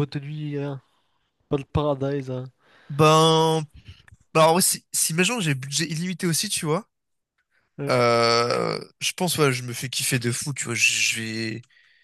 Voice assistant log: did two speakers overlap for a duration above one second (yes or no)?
no